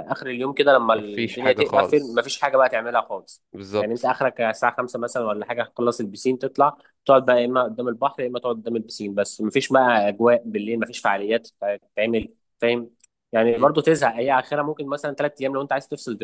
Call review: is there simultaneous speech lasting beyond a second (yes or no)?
yes